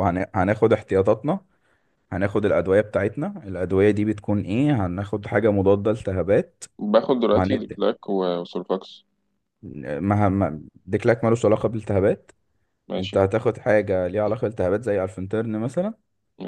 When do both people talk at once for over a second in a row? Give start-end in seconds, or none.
none